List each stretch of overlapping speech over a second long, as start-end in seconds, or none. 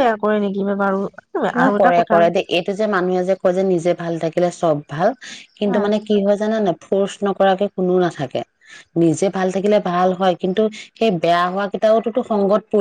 none